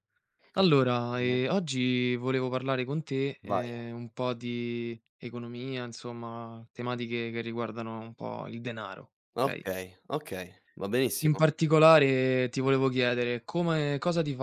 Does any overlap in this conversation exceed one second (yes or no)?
no